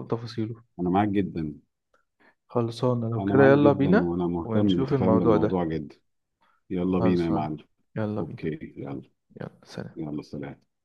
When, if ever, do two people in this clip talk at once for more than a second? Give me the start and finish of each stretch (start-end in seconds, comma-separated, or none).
3.2-5.6